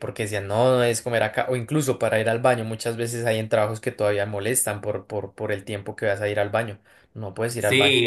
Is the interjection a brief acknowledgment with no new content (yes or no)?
no